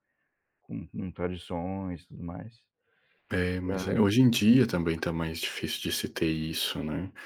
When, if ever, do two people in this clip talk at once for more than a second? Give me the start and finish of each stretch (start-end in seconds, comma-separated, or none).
none